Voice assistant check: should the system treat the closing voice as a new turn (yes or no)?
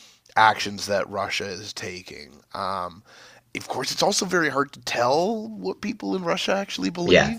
no